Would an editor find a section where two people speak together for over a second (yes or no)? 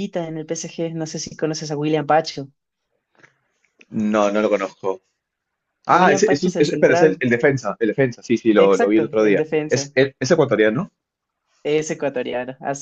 yes